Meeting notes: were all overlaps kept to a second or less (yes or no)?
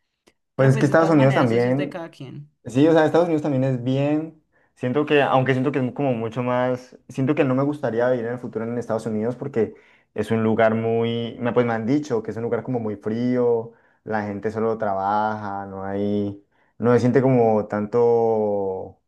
no